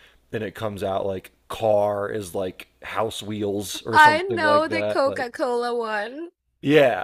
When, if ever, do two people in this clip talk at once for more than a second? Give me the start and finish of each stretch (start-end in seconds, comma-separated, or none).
3.9-5.3